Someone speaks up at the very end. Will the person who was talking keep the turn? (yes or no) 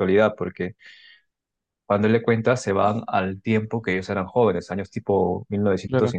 no